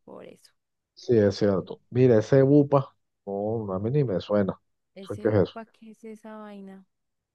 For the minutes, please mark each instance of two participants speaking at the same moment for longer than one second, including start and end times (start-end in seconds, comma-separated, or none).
none